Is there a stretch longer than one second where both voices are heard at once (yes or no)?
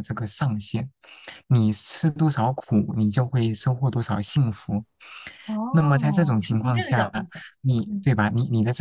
yes